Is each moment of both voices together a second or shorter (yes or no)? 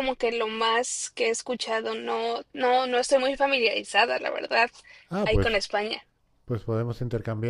yes